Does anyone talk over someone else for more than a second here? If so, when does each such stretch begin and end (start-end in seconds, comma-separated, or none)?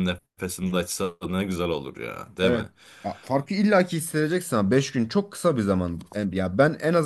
none